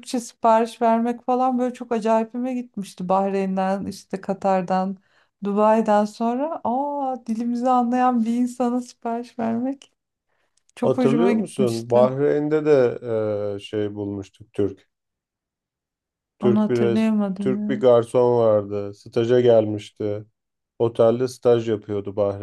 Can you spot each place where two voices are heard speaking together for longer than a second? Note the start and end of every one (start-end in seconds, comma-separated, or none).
10.8-12.1, 16.4-17.9